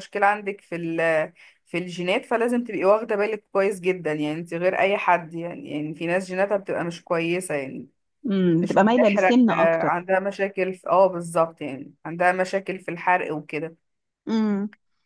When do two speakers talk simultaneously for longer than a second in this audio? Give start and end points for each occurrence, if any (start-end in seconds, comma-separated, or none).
8.6-10.0